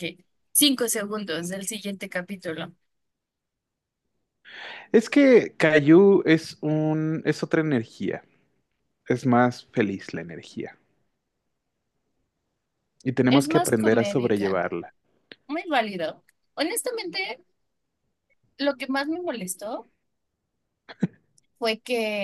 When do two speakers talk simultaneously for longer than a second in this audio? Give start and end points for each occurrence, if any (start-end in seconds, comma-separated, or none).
13.3-14.6